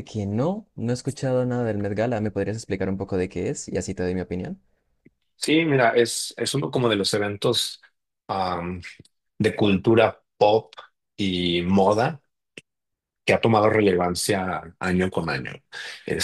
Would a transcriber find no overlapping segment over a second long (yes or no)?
yes